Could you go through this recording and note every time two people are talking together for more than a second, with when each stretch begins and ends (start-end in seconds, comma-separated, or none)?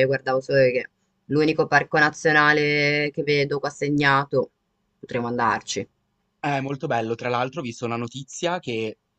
none